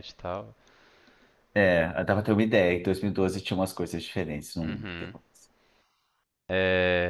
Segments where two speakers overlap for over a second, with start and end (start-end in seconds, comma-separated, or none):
none